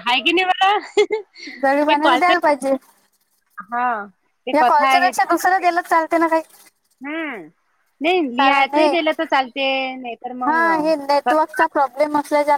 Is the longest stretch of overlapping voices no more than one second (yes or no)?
yes